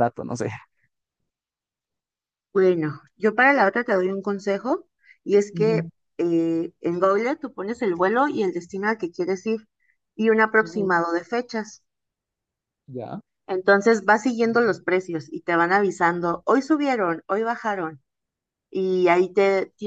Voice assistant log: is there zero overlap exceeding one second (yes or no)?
yes